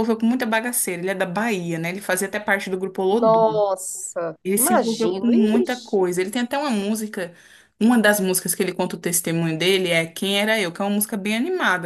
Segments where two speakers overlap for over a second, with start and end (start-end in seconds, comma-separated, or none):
4.4-6.1